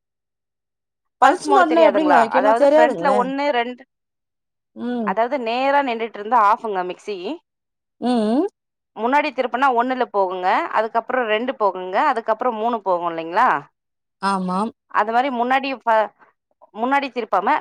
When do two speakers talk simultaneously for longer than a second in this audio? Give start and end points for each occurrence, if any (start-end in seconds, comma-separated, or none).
1.6-3.2